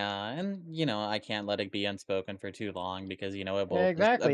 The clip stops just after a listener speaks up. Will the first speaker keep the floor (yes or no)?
no